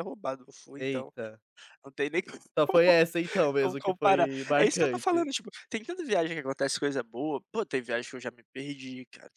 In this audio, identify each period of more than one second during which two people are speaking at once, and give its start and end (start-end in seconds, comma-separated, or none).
3.6-5.3